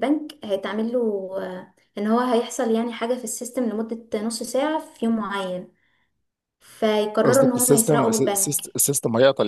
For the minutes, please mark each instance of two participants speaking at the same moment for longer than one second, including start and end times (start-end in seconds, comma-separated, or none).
7.2-8.6